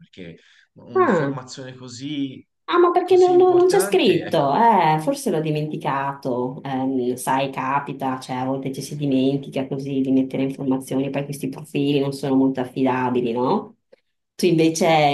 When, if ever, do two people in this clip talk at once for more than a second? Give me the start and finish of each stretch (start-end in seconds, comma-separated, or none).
3.0-4.5